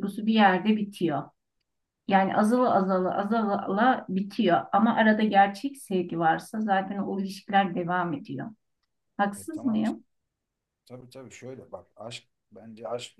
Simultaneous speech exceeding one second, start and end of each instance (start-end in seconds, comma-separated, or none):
none